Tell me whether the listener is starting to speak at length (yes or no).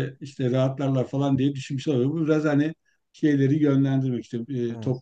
no